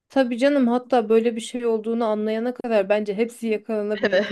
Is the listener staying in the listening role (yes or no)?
no